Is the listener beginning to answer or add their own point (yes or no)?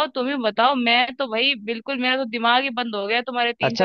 yes